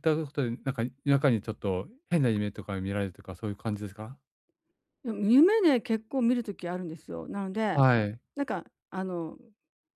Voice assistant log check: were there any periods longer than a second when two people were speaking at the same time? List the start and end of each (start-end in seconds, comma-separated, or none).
none